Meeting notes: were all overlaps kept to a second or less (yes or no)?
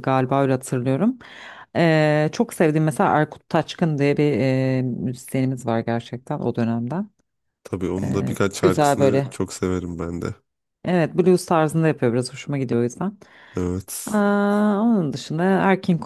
no